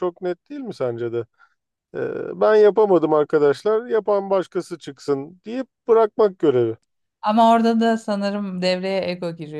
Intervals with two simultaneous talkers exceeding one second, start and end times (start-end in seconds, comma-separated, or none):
none